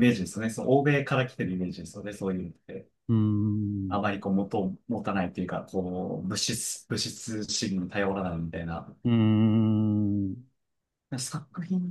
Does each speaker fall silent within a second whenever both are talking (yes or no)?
yes